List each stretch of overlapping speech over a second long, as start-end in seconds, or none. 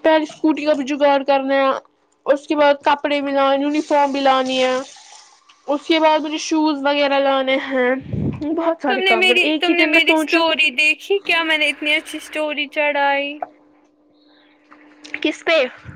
8.9-10.6